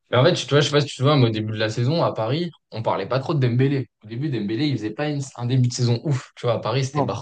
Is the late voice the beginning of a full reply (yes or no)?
no